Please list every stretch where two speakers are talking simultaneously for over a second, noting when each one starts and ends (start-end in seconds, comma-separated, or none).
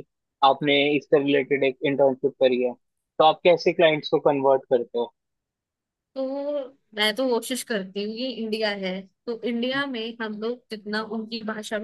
none